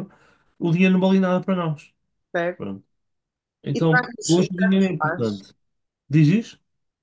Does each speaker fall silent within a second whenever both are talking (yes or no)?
no